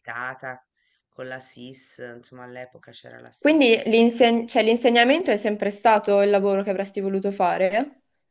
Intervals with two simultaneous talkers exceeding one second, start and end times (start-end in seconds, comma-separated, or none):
none